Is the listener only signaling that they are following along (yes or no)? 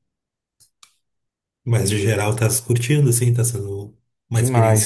no